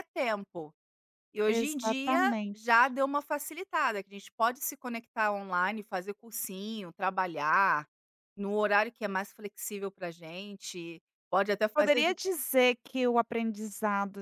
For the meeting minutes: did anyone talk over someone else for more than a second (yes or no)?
yes